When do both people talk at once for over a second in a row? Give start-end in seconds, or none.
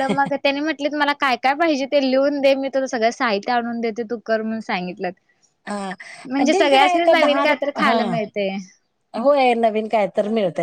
6.3-8.0